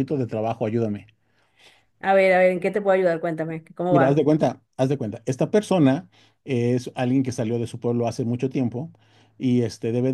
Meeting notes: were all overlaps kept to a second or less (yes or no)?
yes